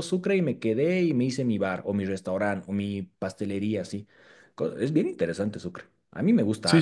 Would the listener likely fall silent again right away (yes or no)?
no